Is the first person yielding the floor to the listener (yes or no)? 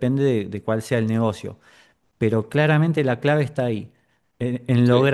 no